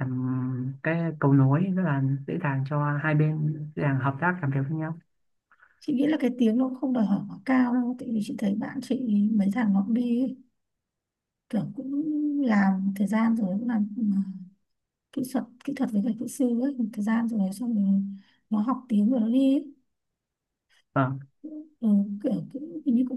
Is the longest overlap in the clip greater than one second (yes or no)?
no